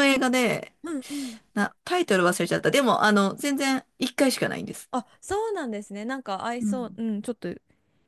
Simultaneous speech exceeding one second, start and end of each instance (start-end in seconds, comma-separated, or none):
none